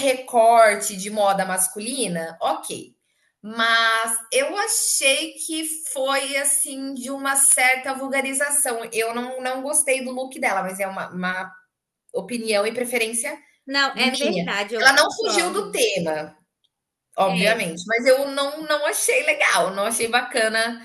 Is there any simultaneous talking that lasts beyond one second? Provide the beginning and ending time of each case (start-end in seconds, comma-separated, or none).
13.9-15.8